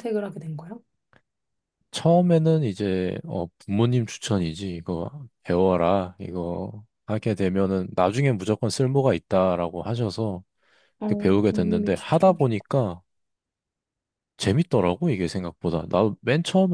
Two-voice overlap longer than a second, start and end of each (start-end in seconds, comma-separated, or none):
11.1-12.7